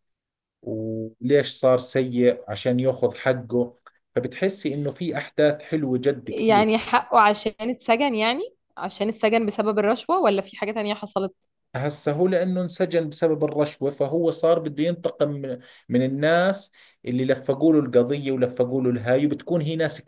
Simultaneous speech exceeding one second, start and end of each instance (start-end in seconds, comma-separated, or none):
none